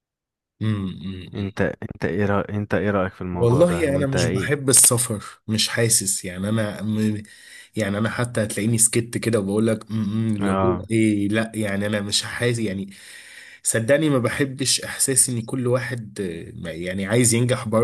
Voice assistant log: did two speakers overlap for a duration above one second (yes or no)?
yes